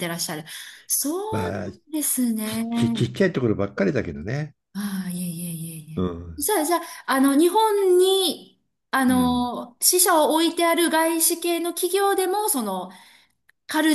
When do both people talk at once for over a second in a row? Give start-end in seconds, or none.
none